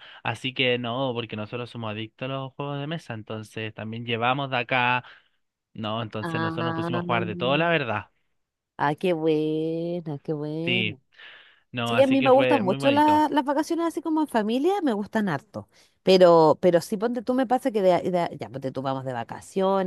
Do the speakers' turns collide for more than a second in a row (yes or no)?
yes